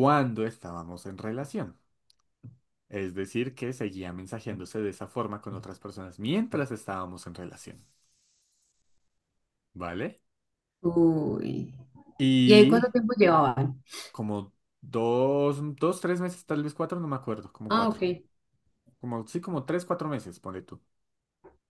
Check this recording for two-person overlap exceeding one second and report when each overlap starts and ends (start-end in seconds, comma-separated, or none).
none